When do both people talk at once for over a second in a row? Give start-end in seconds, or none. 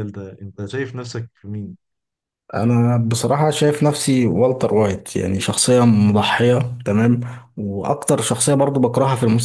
none